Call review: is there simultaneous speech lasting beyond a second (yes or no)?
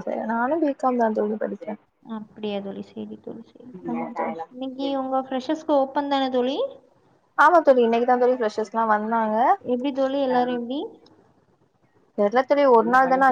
no